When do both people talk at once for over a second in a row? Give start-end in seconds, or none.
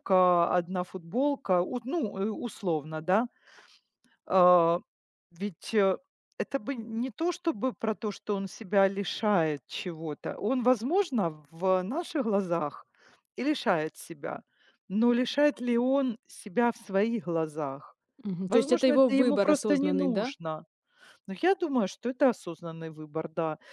18.5-20.3